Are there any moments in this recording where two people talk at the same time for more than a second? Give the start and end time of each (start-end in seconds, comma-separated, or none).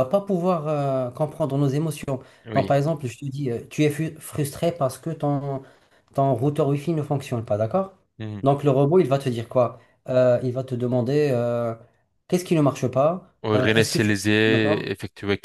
13.4-14.9